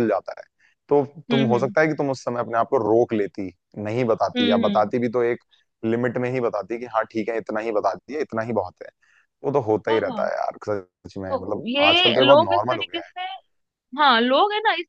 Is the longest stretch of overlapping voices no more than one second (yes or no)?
no